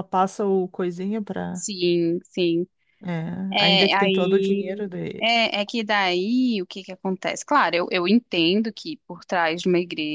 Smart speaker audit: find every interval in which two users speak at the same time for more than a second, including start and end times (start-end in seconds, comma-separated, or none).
3.6-5.3